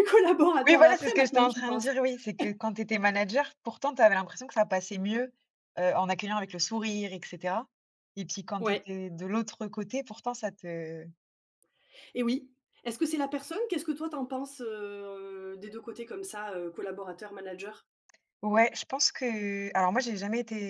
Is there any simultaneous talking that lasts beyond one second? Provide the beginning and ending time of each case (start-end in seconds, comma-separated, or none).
0.7-1.9